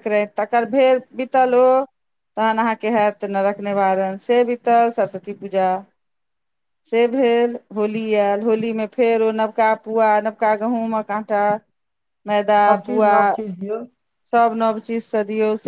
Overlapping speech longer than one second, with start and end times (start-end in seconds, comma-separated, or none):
none